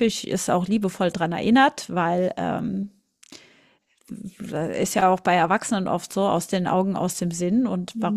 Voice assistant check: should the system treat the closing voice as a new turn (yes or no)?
no